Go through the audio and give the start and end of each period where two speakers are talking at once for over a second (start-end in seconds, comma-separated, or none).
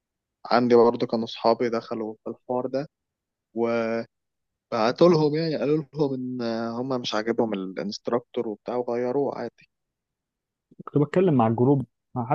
none